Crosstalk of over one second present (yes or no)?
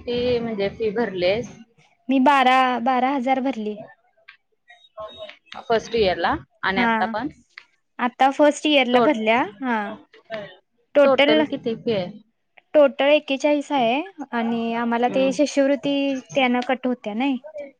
no